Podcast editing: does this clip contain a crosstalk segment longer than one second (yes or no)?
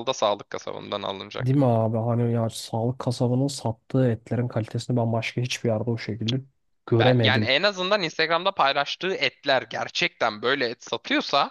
no